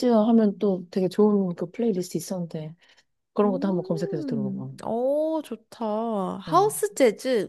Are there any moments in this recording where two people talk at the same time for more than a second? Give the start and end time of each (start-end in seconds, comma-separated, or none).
3.4-4.7